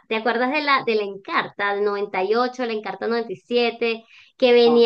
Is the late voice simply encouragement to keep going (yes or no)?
yes